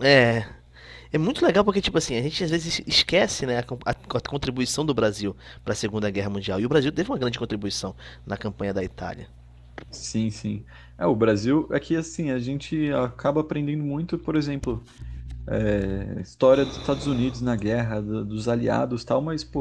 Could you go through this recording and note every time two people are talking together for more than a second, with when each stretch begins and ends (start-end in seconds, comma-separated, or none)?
none